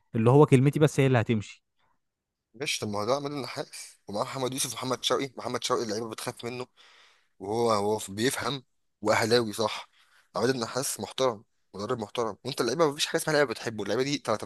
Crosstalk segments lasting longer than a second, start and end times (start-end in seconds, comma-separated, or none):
none